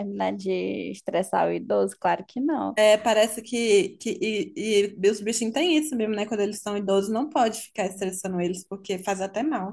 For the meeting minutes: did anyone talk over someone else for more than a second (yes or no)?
no